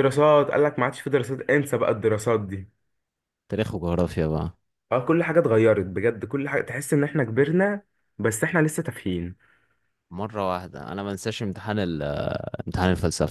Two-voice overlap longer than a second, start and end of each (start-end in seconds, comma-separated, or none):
none